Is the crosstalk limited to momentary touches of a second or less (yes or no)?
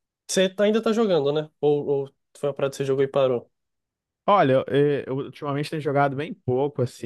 yes